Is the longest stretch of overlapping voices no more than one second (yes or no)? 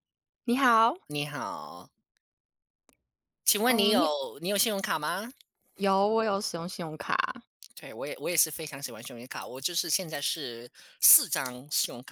yes